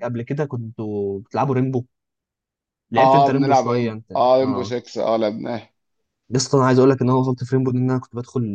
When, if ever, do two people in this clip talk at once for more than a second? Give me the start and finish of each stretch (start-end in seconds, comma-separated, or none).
3.0-4.7